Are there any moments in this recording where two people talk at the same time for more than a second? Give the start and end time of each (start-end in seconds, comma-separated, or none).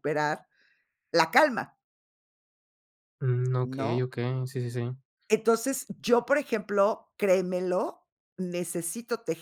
none